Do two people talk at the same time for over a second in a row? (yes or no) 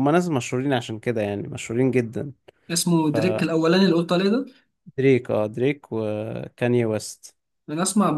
no